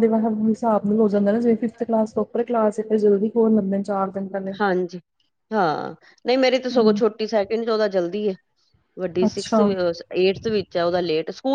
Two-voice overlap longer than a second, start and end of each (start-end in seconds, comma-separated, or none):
none